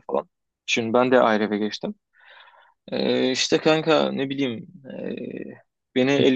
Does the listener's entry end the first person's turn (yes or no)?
no